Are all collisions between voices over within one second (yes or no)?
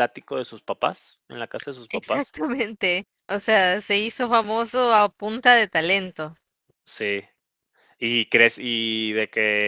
yes